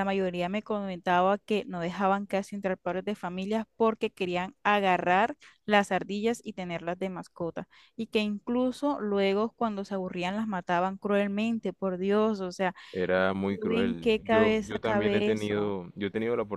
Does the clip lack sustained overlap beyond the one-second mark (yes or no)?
no